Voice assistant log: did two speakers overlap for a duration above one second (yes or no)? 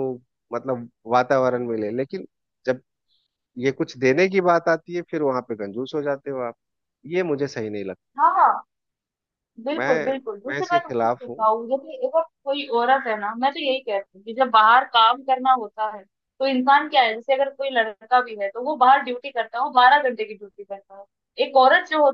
yes